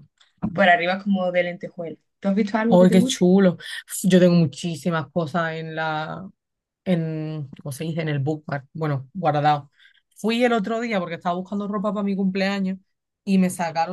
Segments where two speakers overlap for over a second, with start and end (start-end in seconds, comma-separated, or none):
none